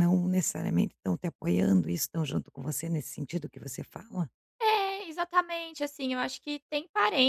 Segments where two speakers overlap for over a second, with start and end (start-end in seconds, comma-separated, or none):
none